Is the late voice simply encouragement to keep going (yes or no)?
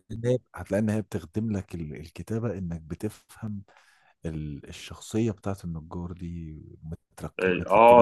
no